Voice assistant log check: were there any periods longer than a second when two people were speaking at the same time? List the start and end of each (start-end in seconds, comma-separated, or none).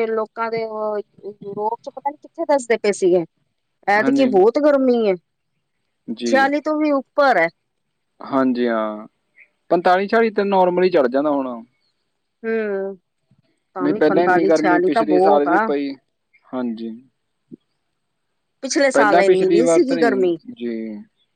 18.9-20.2